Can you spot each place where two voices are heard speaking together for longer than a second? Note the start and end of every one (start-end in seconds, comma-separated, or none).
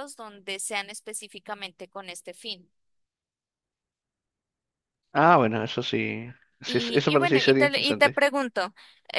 6.6-8.2